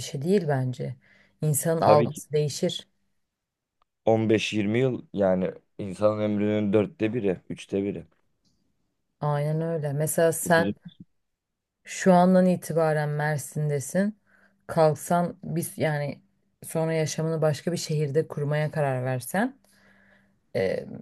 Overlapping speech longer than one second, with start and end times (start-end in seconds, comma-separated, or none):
none